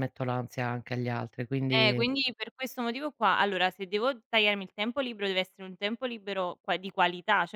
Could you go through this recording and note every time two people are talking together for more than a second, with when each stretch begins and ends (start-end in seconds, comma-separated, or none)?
none